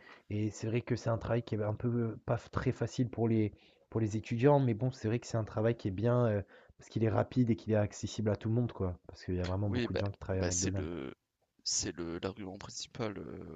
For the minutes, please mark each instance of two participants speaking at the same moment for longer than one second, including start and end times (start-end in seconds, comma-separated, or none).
9.6-11.0